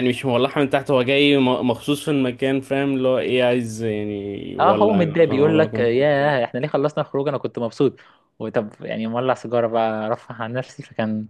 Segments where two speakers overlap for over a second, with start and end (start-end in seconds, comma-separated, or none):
4.6-5.9